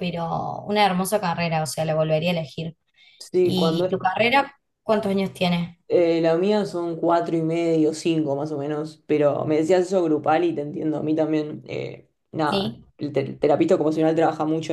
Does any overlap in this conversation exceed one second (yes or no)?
no